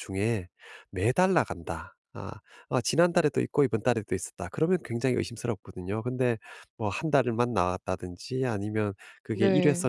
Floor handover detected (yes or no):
no